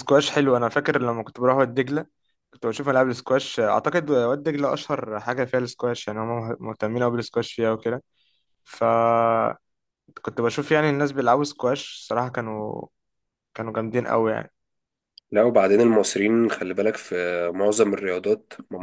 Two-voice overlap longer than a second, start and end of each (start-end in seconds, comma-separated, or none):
none